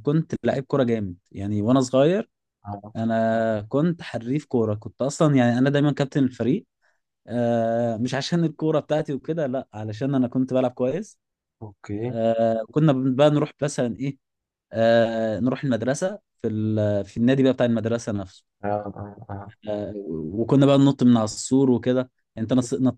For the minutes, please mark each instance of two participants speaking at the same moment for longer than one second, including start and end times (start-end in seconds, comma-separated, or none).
none